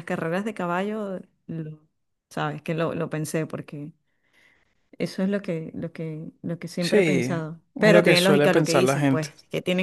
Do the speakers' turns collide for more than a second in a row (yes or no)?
yes